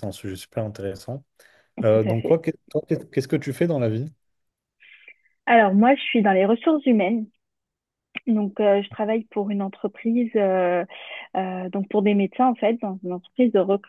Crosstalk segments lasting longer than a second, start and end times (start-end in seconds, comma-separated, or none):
none